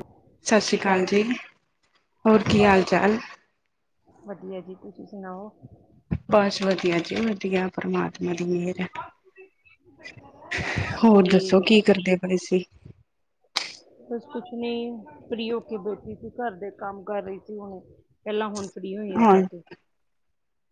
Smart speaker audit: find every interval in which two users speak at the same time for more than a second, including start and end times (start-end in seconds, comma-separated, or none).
none